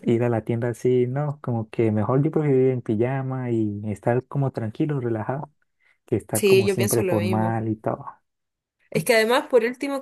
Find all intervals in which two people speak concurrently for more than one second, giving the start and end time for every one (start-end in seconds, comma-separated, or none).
6.3-7.6